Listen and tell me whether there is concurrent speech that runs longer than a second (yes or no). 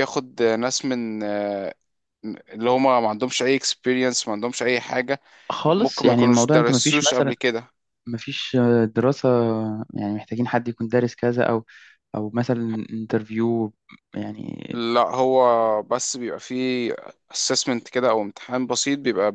yes